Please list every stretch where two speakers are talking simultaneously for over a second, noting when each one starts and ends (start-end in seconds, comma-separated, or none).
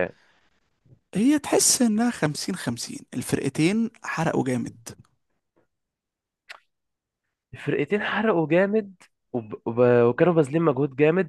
none